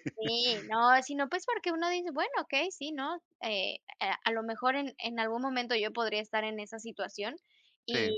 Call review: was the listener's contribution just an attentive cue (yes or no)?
yes